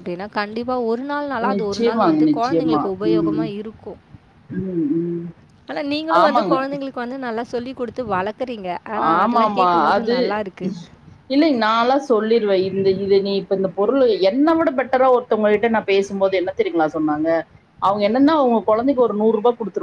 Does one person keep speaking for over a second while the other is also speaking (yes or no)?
yes